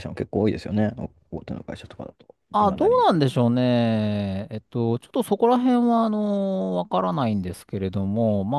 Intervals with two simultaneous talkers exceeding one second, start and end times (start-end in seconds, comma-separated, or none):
none